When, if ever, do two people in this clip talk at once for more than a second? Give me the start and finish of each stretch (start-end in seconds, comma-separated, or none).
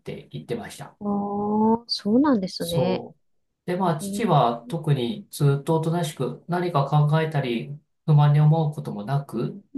none